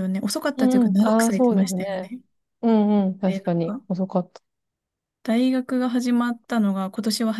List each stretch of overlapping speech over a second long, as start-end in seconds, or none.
0.6-2.1